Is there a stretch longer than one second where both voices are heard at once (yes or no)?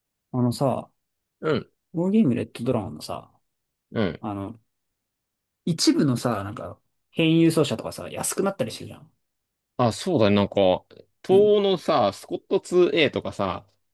no